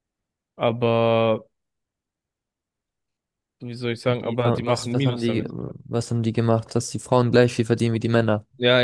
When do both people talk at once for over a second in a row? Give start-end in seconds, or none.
4.1-5.5